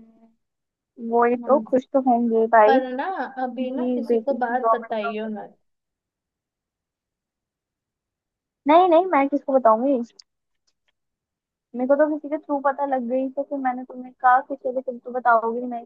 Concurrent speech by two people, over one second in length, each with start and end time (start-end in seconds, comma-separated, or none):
3.4-5.3